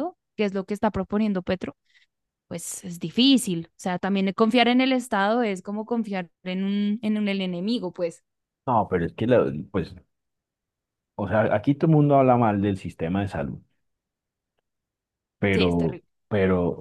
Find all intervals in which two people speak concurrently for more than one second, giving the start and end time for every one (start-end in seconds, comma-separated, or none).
none